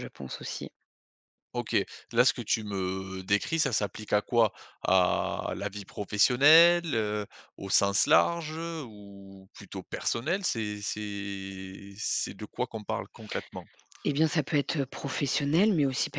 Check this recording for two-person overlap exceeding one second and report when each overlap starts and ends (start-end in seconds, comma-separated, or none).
none